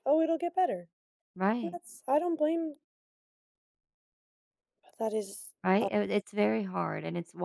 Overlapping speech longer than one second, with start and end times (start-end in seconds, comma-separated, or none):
none